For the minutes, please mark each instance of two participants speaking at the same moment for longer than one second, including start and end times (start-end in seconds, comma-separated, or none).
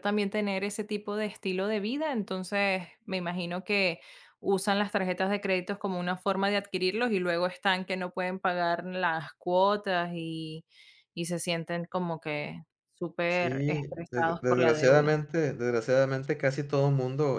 13.3-15.1